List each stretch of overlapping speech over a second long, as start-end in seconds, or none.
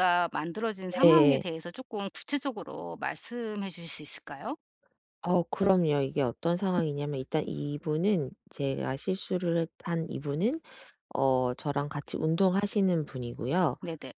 none